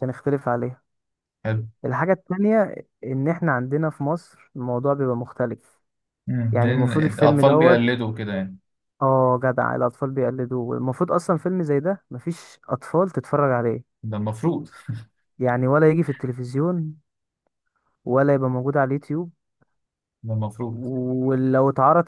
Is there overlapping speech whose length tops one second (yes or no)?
yes